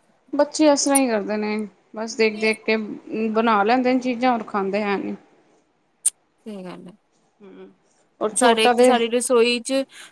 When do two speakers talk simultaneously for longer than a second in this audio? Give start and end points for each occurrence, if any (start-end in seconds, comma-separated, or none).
none